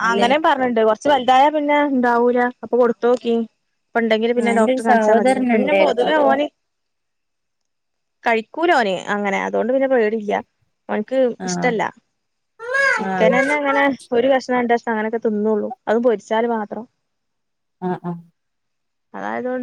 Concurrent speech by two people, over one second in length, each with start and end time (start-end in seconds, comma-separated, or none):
4.4-6.3